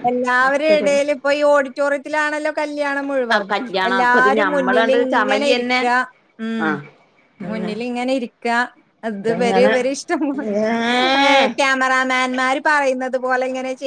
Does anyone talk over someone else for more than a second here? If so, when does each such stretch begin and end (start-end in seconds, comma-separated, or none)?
3.9-5.8